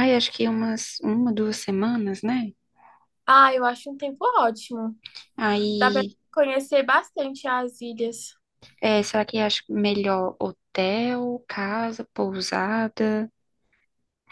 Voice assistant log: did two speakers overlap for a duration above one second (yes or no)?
no